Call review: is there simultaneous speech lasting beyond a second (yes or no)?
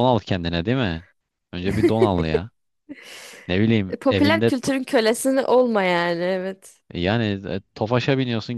no